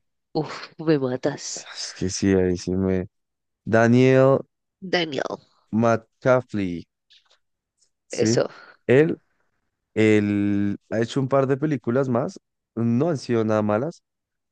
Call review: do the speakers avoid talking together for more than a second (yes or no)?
yes